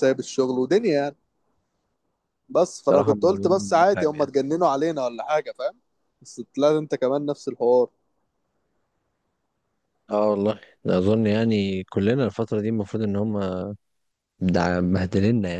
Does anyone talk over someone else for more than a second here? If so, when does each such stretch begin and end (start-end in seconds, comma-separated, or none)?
2.9-4.3